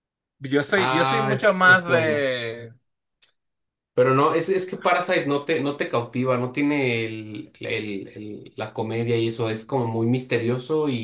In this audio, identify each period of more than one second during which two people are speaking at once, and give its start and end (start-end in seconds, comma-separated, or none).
0.8-2.2